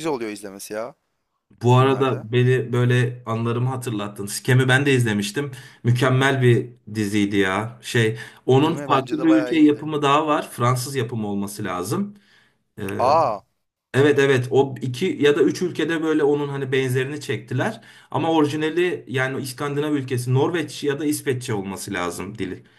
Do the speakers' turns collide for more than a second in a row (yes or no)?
yes